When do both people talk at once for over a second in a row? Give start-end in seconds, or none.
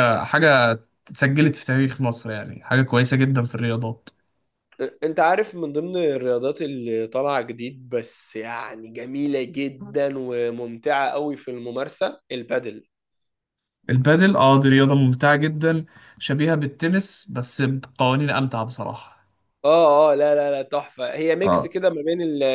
none